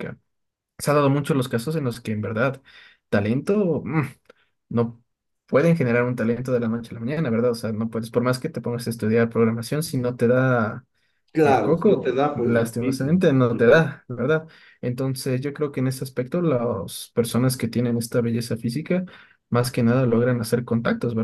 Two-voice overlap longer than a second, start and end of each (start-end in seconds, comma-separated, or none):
11.4-13.8